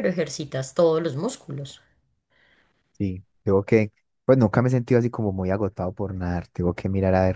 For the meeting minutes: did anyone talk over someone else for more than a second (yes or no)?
no